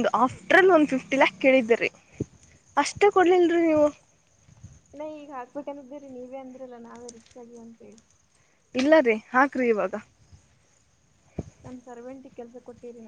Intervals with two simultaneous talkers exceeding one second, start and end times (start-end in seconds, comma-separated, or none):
none